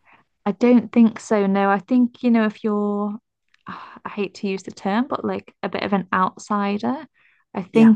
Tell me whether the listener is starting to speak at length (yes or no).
no